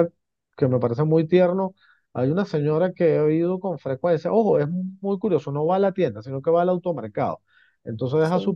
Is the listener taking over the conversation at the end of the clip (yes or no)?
no